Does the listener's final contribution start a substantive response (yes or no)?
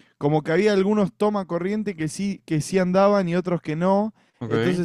no